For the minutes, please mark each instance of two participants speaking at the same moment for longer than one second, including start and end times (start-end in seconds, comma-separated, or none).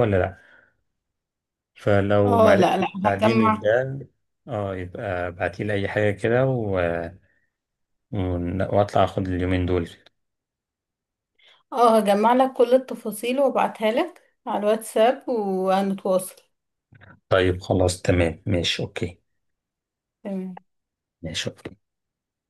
2.3-3.7